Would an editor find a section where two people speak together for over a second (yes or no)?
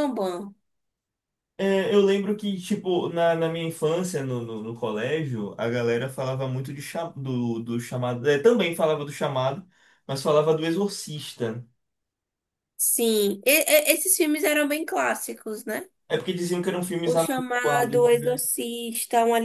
yes